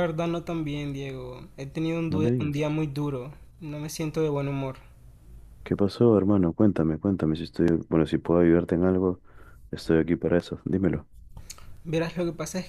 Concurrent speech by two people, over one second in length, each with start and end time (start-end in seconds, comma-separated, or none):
none